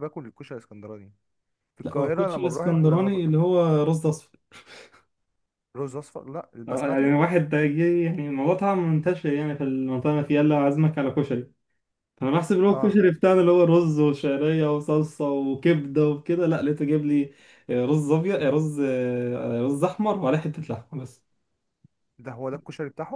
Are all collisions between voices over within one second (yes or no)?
no